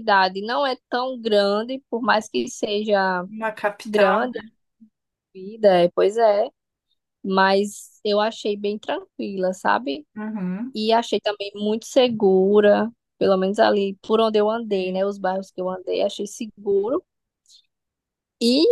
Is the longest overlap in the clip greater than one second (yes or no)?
no